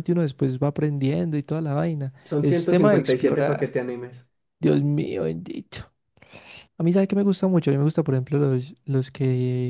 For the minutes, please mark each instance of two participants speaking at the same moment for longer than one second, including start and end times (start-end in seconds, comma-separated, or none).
2.2-3.8